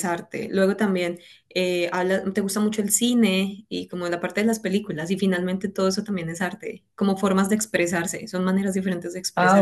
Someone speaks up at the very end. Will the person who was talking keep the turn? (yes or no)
no